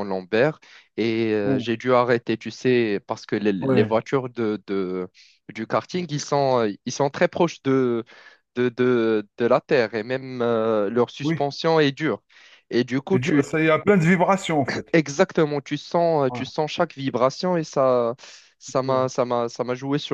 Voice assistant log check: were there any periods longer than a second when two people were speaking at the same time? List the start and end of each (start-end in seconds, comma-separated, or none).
none